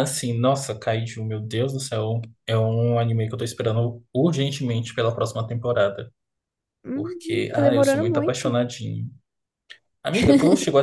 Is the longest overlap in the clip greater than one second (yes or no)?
yes